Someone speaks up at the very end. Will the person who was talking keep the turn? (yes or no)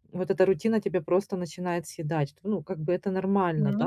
yes